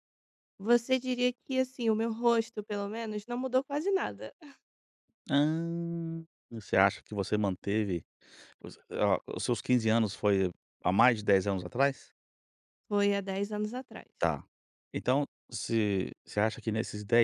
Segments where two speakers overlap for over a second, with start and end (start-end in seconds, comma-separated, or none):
none